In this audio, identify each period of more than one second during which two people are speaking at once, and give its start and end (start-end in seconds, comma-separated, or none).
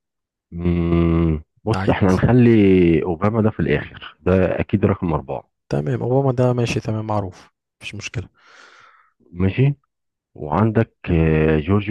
none